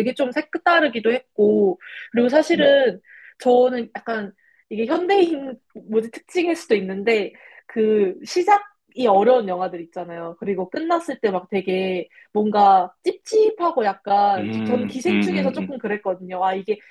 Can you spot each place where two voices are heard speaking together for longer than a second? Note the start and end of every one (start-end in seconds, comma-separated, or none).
14.4-15.8